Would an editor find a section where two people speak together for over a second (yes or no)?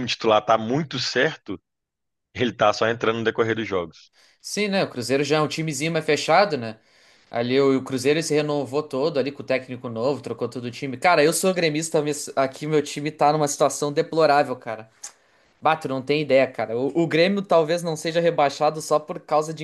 no